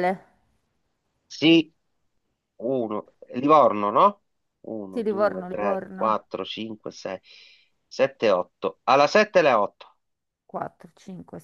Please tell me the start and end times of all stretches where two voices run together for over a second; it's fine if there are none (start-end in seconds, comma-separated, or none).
4.9-6.1